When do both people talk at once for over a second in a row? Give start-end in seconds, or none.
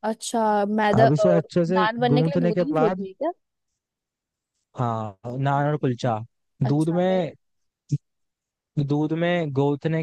1.0-3.0